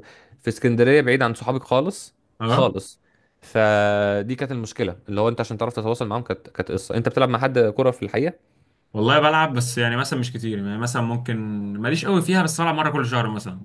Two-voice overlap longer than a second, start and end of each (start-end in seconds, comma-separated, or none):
none